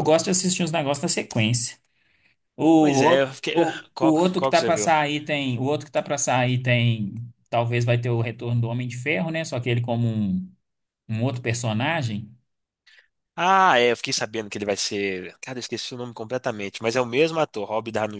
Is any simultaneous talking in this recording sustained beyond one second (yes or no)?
yes